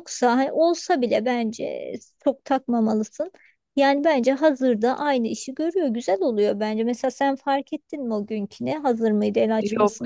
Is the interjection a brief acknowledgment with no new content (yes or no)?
no